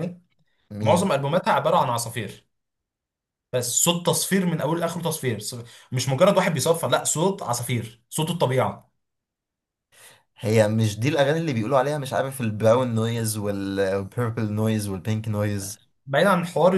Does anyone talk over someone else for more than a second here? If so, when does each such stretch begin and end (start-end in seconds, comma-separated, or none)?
none